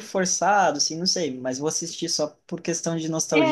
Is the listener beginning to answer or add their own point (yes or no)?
yes